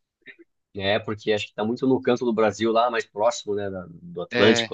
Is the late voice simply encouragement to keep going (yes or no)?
yes